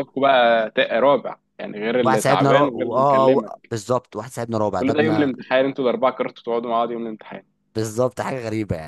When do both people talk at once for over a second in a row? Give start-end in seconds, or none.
2.0-3.7